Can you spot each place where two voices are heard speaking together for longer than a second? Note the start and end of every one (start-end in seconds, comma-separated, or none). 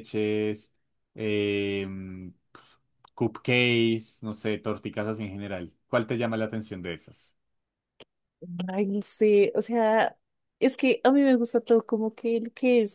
none